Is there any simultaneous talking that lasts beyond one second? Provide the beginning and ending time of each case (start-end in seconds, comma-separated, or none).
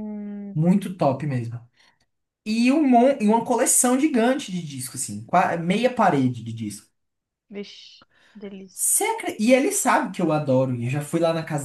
none